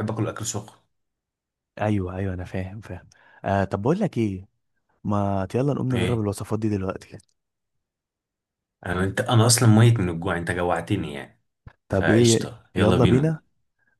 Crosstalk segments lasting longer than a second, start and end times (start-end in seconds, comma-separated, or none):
11.9-13.4